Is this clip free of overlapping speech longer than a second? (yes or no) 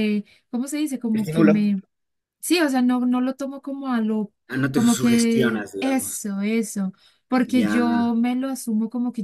no